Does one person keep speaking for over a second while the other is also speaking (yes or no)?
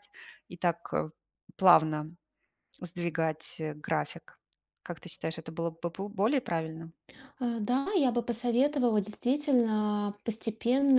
no